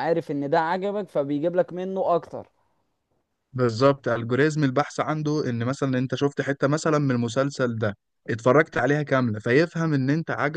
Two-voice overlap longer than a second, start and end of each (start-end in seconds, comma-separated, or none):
none